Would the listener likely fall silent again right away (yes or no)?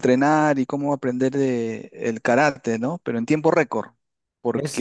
no